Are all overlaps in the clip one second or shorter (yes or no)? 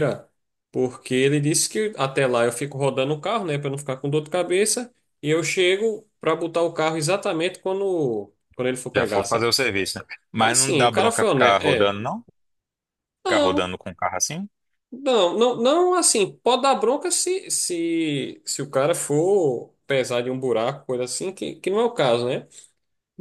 no